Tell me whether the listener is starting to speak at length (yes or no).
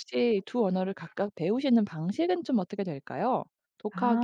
no